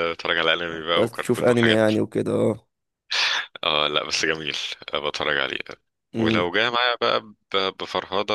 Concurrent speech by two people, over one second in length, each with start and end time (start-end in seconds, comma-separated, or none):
0.7-1.9